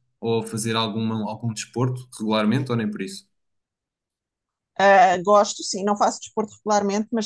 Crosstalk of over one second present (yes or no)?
no